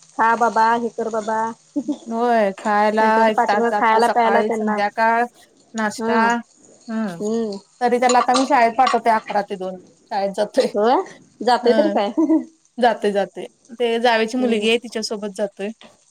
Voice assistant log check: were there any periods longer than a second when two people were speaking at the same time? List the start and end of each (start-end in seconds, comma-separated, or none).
3.0-4.8